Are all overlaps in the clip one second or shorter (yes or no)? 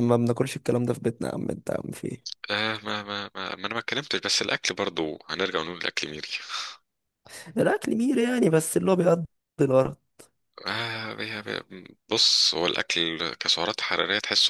yes